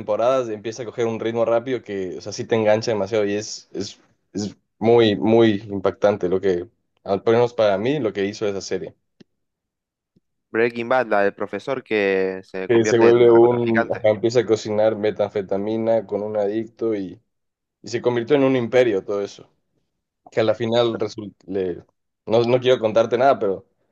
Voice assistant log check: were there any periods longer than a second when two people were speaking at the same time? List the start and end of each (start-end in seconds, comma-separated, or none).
12.7-14.1